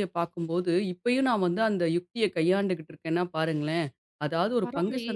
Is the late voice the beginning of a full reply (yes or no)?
no